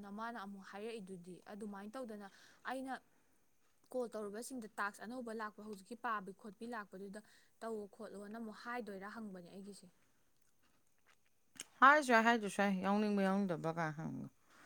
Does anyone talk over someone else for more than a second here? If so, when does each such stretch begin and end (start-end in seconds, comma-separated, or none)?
none